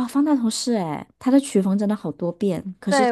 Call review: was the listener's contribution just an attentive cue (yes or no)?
no